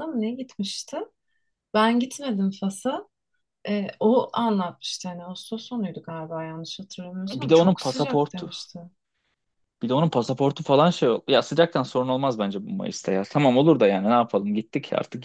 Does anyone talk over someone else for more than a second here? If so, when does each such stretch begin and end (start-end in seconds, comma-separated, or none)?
7.3-8.5